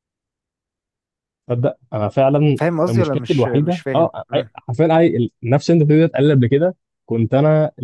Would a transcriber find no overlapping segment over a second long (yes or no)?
no